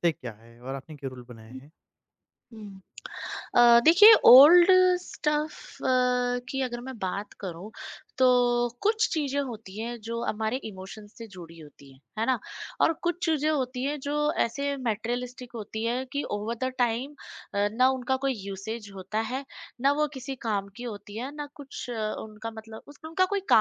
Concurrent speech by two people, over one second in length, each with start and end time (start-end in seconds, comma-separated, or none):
none